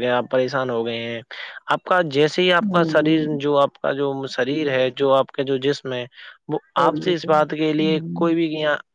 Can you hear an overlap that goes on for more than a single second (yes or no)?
yes